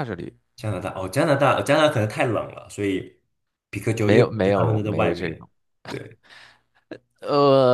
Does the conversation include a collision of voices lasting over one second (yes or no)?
yes